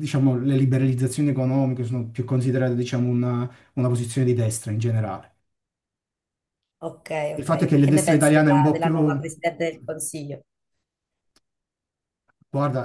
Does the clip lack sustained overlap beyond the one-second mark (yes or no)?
no